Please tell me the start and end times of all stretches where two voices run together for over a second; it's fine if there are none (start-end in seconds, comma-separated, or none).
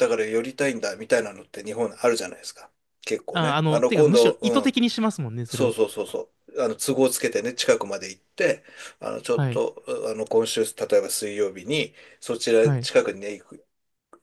3.3-4.8